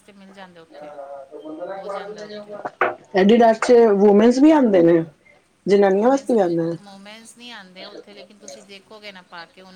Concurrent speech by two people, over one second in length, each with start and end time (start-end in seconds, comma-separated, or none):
none